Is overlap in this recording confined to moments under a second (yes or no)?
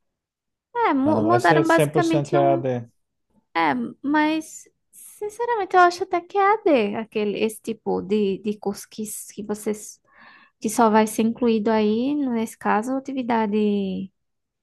no